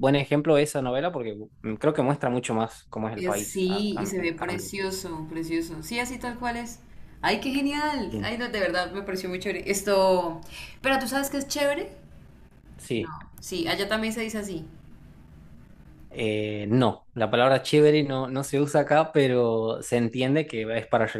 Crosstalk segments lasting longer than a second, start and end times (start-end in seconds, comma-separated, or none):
3.1-4.7